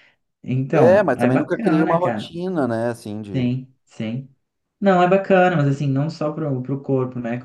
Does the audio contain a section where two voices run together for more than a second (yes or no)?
yes